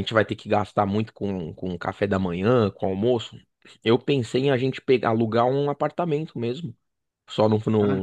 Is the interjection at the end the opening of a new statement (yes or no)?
no